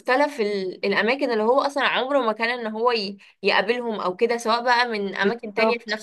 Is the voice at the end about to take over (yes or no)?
no